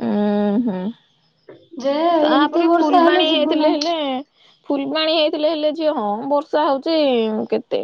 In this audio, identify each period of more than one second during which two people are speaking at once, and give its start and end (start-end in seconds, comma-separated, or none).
2.3-3.8